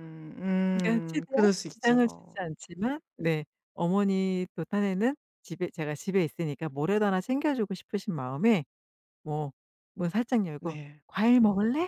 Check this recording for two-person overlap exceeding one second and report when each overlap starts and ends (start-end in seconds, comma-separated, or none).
0.8-2.4